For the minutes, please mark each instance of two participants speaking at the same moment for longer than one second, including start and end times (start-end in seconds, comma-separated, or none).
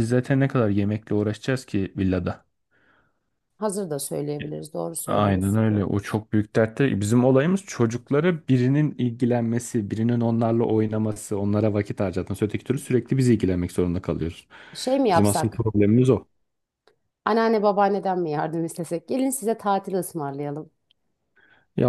none